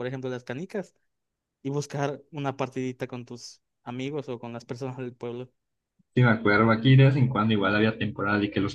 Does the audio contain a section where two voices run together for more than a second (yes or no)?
no